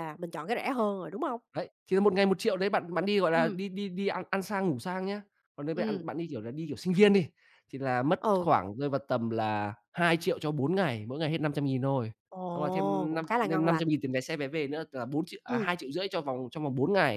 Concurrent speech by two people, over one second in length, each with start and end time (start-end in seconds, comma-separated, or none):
12.5-13.9